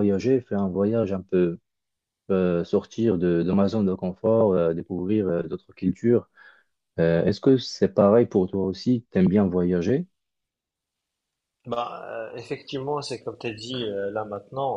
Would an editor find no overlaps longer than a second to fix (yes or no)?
yes